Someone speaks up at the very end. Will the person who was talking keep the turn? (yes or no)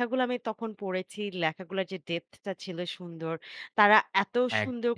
yes